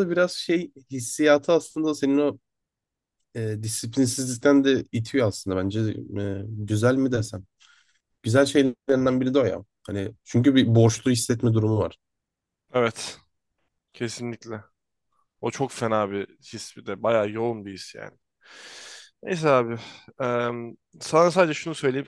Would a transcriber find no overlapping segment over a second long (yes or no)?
yes